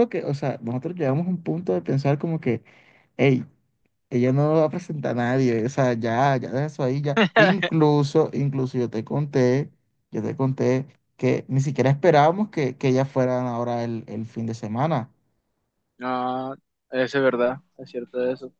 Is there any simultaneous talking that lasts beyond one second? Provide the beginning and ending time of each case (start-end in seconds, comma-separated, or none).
none